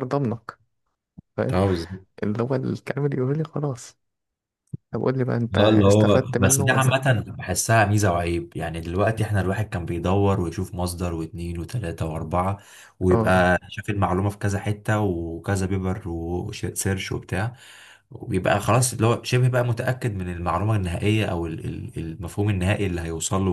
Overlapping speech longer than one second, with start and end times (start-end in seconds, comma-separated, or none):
5.6-7.0